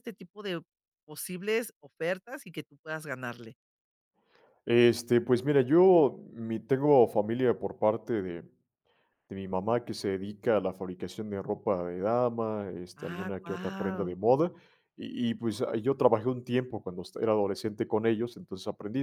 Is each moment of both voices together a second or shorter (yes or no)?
no